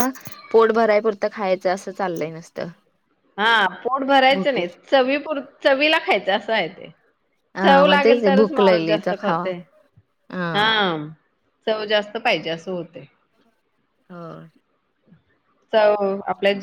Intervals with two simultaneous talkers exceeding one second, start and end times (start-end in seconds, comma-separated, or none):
7.6-9.4